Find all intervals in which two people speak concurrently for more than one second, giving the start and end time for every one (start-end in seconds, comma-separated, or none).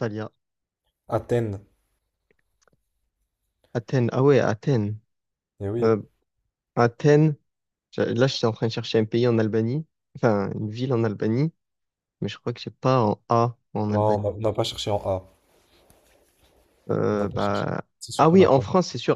17.1-18.6